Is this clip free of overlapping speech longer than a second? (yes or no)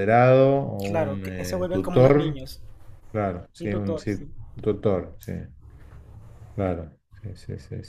no